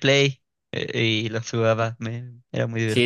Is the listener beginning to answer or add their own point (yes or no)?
yes